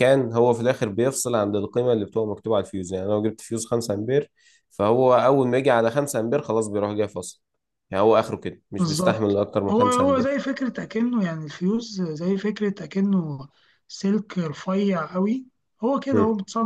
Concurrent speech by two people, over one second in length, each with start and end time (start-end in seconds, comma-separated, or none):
8.8-10.4